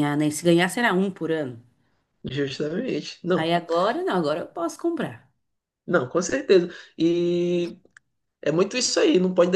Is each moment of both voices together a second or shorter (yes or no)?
yes